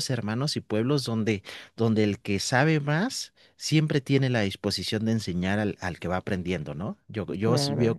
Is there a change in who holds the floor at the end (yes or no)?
yes